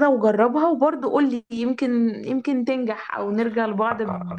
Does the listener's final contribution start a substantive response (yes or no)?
yes